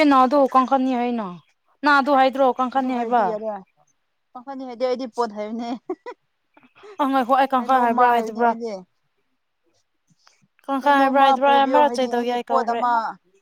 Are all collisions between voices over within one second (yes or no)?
no